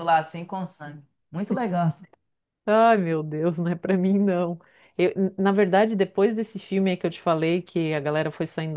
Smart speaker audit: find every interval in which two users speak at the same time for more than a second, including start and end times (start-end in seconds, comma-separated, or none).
none